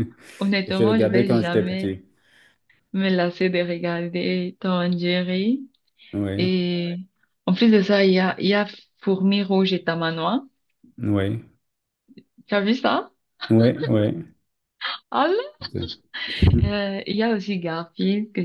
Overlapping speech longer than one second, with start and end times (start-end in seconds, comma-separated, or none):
0.7-1.9